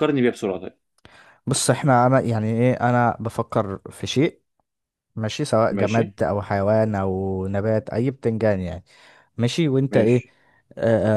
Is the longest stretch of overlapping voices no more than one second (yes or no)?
yes